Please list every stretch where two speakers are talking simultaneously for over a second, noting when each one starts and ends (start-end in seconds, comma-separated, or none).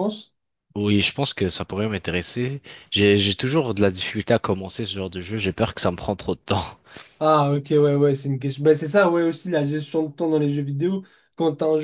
none